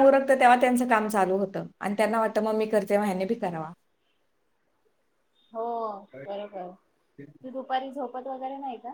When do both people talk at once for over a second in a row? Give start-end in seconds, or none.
none